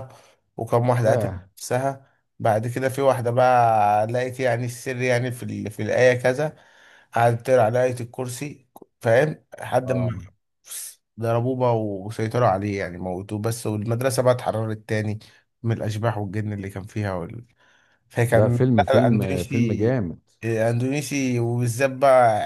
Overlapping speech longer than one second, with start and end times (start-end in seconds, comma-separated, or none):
18.3-20.0